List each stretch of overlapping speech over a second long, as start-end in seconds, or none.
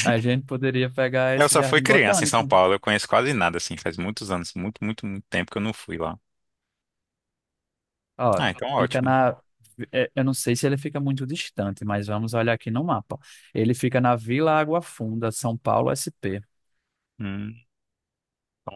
1.3-2.5